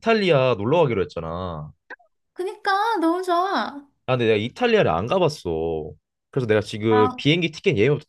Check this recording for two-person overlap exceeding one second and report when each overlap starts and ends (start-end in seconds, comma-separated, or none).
none